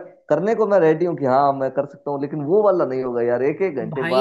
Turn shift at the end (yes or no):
yes